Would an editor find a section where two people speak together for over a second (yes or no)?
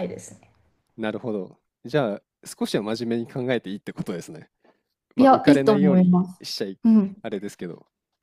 yes